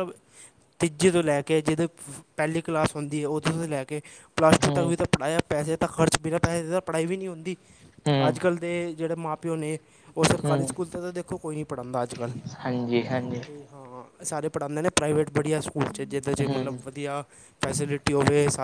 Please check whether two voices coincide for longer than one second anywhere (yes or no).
no